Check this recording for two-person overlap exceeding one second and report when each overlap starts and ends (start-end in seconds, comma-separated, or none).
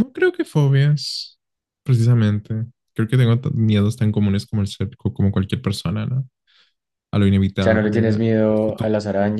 7.6-8.9